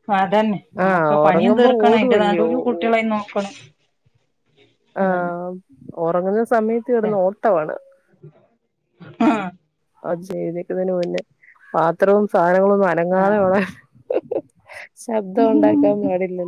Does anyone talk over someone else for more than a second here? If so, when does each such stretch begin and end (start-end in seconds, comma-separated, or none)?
0.9-2.5